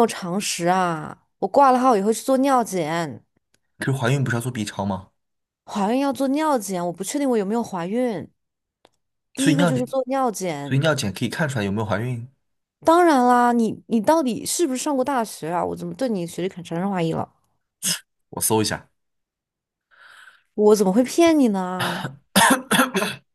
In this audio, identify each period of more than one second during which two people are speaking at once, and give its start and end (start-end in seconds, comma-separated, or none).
none